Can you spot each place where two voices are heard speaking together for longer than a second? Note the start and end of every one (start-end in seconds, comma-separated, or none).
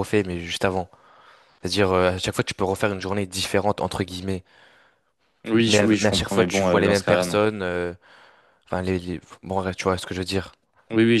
5.7-7.4